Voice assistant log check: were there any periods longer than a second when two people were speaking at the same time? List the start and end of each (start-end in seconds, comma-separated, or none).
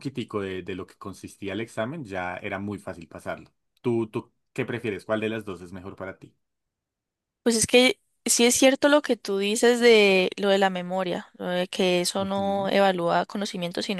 none